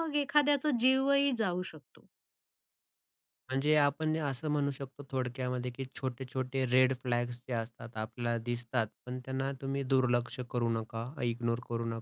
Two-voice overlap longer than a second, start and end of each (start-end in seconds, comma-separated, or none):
none